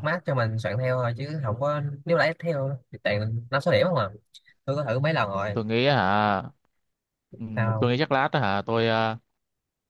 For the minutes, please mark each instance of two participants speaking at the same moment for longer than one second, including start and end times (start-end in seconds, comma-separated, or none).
none